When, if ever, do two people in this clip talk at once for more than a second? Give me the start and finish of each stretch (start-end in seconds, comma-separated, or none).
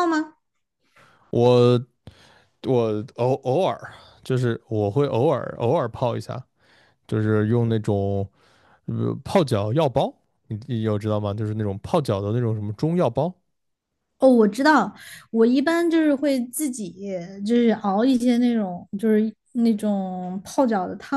none